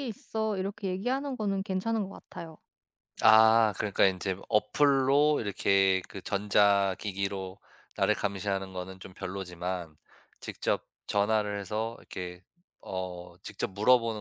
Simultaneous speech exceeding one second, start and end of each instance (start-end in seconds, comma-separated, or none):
none